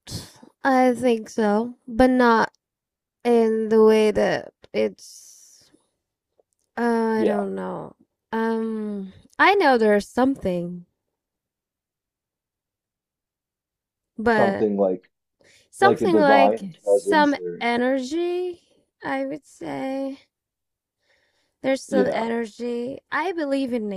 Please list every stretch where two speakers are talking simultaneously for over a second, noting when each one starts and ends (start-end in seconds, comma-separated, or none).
15.8-17.6